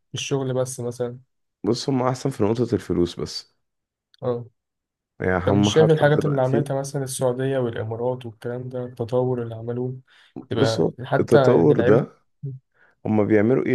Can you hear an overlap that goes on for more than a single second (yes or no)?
yes